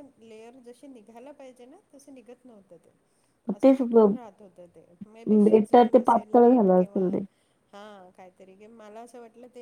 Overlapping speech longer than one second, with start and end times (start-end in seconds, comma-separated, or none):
5.5-7.2